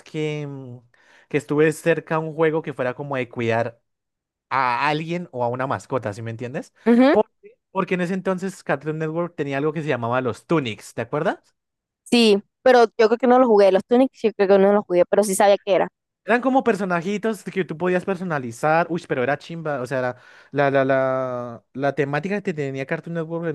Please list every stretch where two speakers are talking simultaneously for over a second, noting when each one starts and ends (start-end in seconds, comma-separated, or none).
none